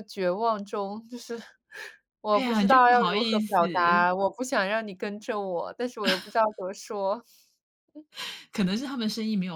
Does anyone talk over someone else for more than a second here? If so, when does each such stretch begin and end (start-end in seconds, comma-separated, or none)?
2.3-3.6